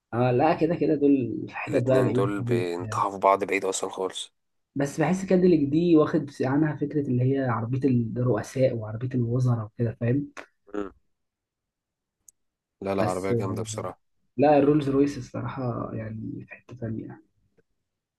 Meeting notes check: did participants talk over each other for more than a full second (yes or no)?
yes